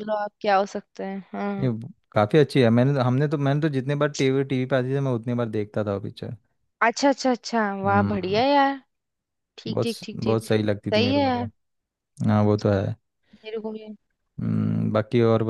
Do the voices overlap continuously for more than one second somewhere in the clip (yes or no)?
yes